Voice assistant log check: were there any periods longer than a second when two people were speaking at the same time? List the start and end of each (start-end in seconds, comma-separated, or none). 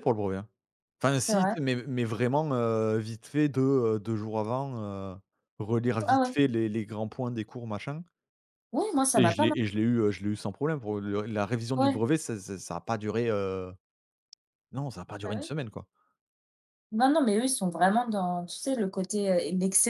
none